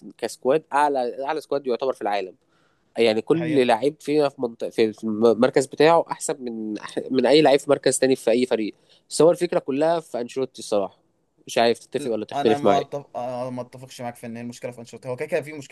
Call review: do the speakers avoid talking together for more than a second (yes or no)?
yes